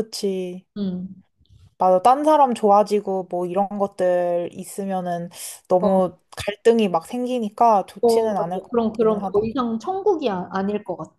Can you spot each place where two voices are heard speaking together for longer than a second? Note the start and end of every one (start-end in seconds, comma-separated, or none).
8.0-9.5